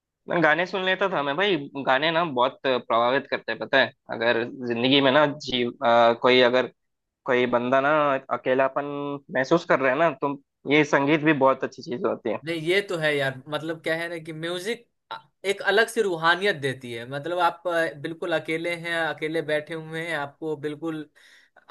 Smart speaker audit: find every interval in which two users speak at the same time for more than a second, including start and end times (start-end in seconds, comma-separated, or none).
none